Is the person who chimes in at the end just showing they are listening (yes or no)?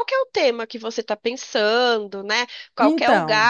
yes